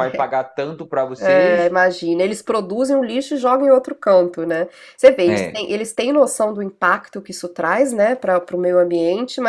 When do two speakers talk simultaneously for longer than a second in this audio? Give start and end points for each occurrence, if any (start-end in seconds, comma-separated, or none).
none